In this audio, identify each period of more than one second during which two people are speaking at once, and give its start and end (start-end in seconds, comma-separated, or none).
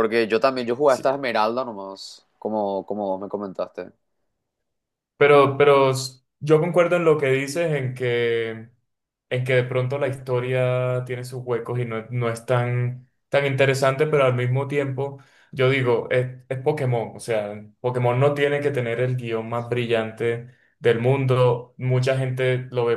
none